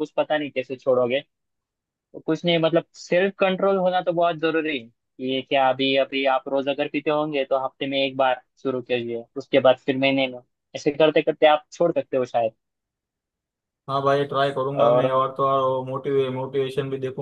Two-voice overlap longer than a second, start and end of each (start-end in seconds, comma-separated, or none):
none